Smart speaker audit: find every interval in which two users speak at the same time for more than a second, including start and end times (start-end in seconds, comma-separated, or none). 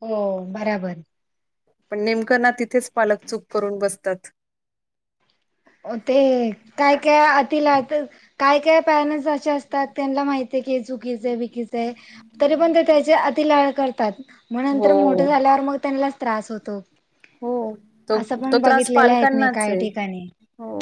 18.2-19.8